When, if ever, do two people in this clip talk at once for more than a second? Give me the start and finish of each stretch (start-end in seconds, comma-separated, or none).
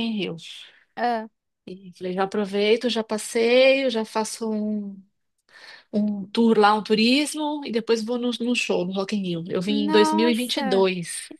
9.7-10.9